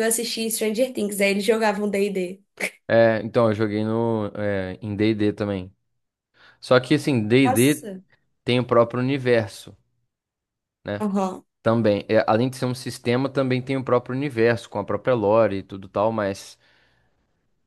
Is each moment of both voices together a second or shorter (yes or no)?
yes